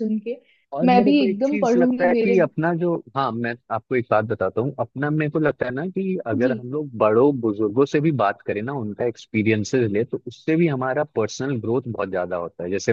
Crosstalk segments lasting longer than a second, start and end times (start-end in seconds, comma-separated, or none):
0.9-2.4